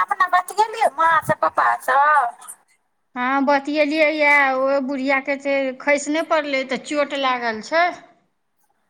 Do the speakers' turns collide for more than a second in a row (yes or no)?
no